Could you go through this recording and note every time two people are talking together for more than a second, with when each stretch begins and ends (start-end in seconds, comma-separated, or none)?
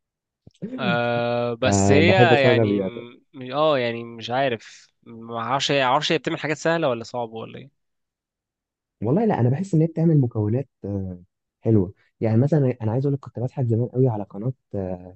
1.6-2.9